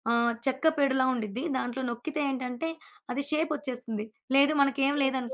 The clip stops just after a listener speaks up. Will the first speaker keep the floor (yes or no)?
yes